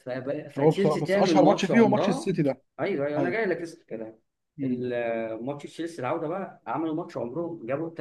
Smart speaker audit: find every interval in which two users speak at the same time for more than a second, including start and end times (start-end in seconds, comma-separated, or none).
0.6-2.3